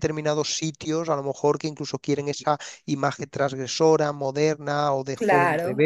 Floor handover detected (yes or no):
no